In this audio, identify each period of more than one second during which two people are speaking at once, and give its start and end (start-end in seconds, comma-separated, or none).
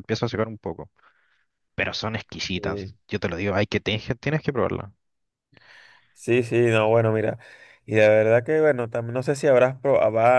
none